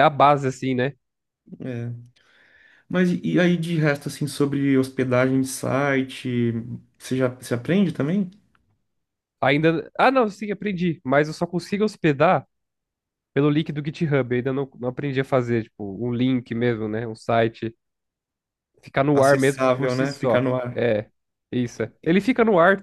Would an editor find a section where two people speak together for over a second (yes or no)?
yes